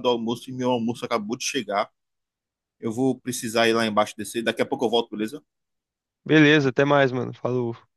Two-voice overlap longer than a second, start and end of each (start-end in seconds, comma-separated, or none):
none